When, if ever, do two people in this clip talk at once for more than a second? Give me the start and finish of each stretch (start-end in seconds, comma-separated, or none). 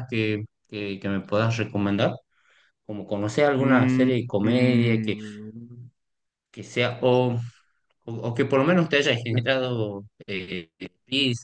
3.6-5.2